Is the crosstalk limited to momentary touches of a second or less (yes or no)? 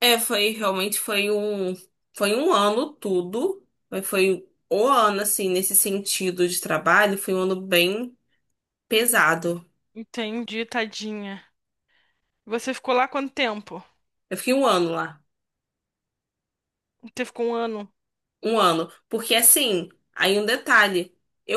yes